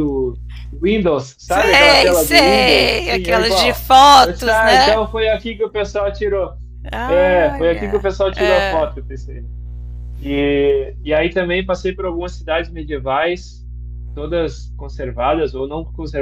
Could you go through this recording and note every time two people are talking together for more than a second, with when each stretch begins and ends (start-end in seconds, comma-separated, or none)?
1.5-5.0, 7.1-8.8